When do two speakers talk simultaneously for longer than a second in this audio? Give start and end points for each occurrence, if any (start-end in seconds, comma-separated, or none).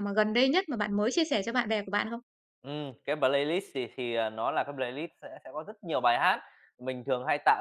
none